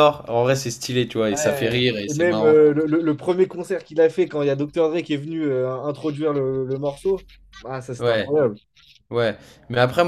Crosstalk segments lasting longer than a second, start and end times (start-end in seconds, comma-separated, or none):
1.3-2.6